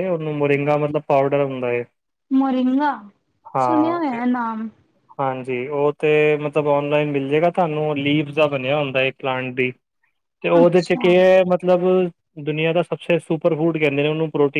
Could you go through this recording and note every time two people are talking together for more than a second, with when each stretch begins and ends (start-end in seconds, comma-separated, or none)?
none